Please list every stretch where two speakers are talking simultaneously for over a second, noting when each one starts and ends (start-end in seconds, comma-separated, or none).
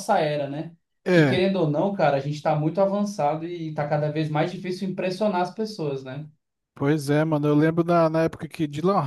none